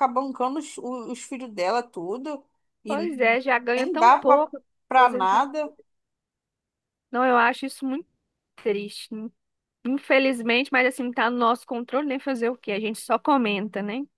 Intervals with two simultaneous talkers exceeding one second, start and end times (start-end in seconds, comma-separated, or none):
none